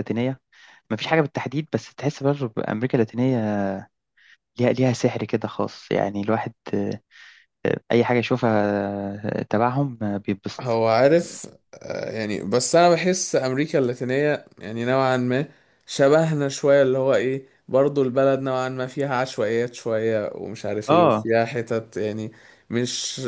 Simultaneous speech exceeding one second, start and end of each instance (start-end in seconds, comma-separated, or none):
none